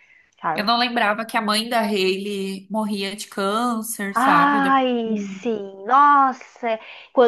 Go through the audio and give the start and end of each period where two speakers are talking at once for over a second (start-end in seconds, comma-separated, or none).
4.2-5.4